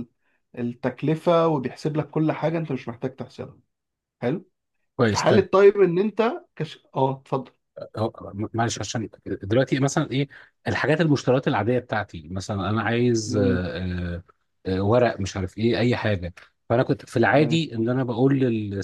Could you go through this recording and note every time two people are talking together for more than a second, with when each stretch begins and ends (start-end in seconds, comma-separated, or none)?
none